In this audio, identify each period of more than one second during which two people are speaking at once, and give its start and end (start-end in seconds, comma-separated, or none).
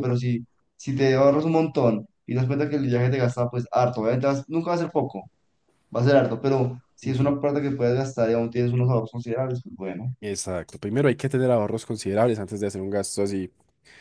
none